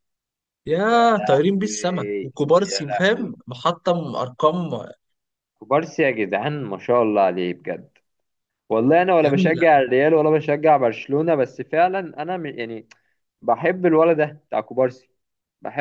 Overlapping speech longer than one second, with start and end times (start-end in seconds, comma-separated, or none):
1.0-3.3